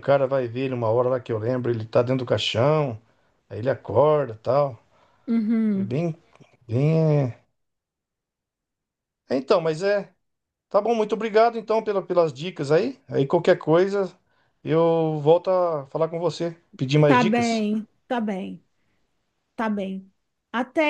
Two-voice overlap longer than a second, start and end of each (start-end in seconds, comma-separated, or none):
none